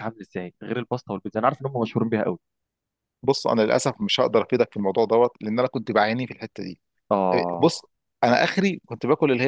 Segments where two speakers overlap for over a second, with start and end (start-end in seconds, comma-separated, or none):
none